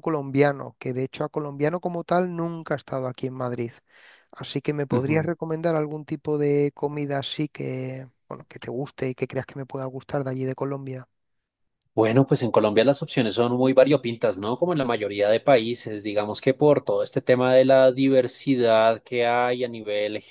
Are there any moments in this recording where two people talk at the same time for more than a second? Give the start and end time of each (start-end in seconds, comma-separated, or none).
none